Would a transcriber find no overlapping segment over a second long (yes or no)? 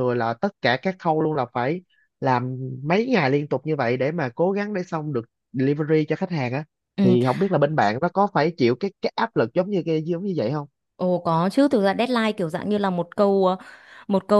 yes